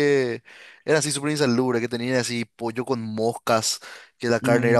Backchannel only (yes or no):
yes